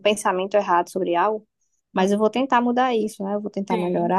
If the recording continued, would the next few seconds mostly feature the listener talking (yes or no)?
no